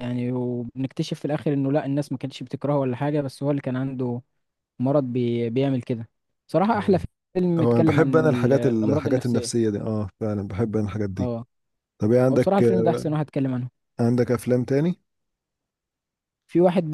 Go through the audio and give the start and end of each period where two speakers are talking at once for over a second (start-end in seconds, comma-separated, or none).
7.6-9.5